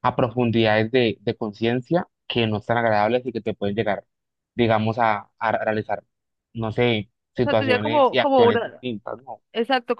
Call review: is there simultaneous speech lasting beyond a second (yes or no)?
yes